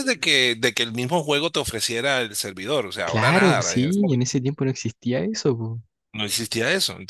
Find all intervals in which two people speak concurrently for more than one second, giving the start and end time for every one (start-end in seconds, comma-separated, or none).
3.0-4.3